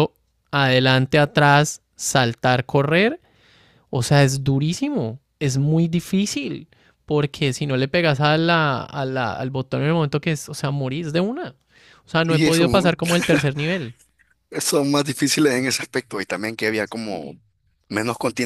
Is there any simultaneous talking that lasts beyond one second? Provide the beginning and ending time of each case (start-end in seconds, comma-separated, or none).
none